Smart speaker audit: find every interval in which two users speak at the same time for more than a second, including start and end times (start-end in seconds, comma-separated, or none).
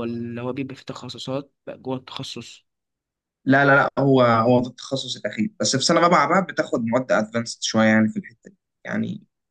none